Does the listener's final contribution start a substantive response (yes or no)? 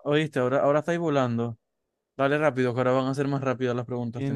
yes